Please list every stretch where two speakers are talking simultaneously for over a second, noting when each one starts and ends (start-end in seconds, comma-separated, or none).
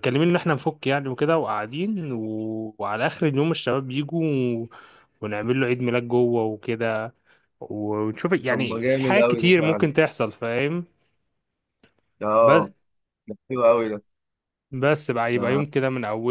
8.5-9.9